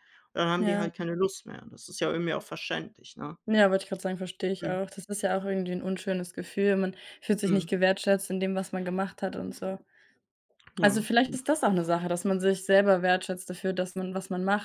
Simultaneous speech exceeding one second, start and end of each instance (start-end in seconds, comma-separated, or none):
none